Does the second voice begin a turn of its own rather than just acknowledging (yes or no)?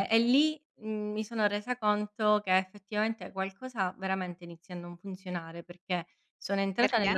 no